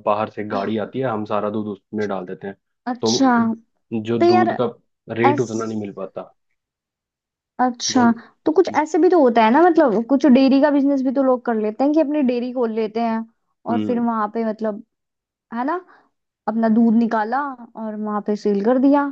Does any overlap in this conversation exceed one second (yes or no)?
no